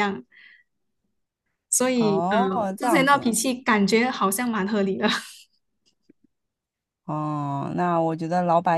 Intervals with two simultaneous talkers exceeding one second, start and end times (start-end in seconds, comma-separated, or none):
1.9-3.4